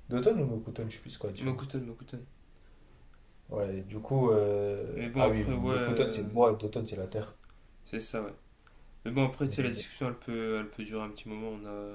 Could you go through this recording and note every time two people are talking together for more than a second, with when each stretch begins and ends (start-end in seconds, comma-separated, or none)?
4.9-6.4